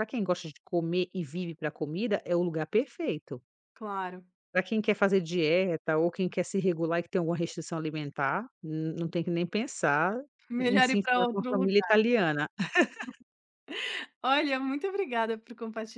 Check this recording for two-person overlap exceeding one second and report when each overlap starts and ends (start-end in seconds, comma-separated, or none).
10.6-12.0